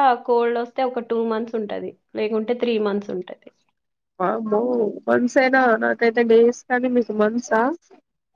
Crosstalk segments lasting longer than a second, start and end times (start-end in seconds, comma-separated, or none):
none